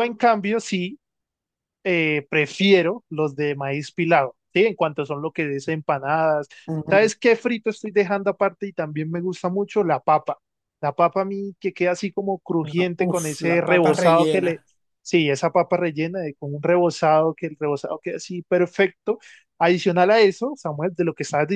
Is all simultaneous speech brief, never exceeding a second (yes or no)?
no